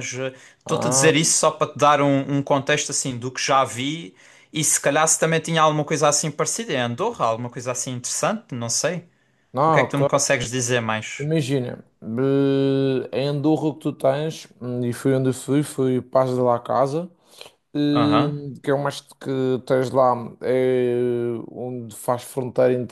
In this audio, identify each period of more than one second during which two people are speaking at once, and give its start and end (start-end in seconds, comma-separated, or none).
none